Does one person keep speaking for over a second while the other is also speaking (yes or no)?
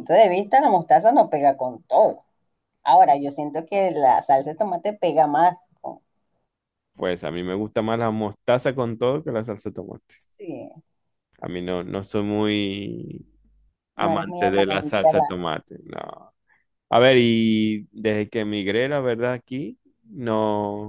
yes